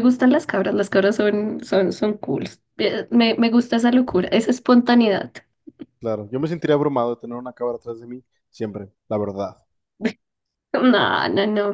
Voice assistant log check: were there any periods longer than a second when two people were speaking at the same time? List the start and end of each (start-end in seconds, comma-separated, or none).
none